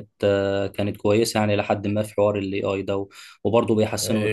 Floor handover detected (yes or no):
yes